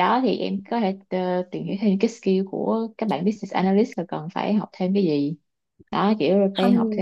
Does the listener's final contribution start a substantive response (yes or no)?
no